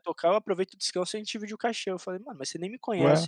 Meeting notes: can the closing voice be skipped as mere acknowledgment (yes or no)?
yes